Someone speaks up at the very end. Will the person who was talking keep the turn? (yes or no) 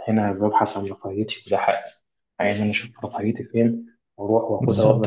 no